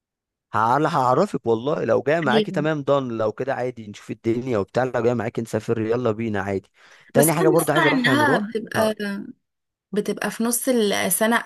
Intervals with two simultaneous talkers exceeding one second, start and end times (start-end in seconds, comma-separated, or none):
7.2-8.9